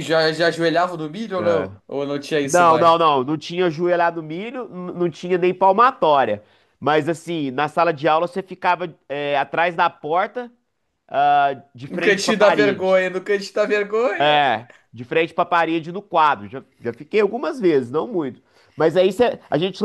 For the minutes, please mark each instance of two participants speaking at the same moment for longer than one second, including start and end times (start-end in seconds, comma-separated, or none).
11.9-13.1